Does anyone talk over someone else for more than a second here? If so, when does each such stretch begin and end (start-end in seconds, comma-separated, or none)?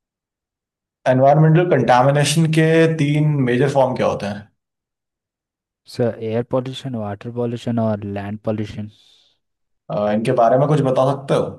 none